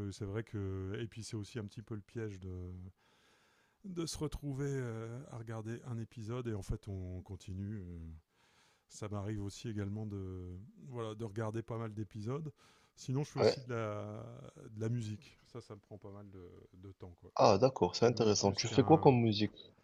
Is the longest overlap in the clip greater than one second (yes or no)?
yes